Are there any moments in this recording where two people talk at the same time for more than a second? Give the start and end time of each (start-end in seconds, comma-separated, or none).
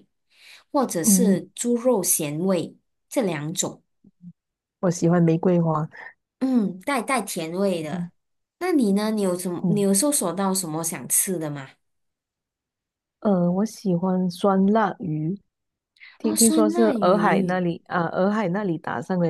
16.2-17.6